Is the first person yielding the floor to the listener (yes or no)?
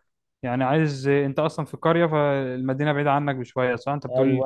yes